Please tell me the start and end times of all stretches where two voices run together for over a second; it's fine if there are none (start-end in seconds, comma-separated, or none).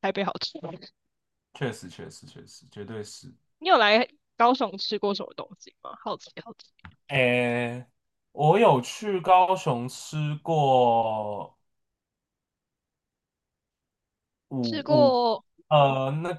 none